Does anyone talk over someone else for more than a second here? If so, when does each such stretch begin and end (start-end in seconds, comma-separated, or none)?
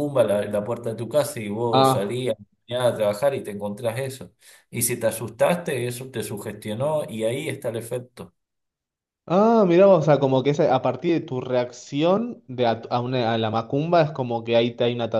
none